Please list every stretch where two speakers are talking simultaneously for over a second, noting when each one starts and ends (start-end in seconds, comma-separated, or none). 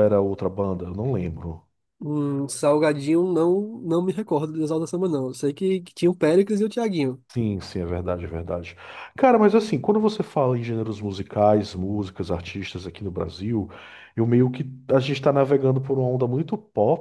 none